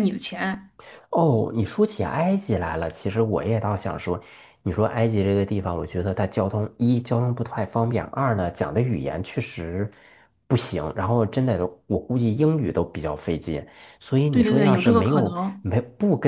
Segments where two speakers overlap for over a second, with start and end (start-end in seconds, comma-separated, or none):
14.3-15.7